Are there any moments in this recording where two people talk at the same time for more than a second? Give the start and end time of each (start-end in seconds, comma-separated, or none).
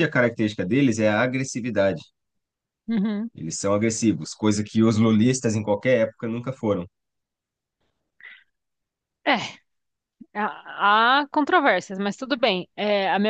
none